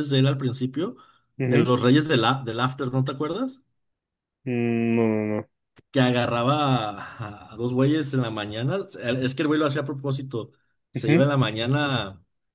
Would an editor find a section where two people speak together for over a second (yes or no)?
no